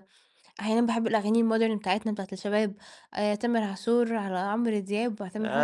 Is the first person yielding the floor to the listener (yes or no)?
yes